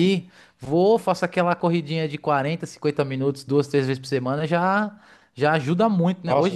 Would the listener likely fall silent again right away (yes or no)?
no